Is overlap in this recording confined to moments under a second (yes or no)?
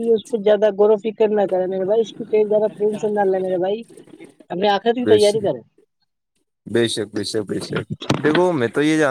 yes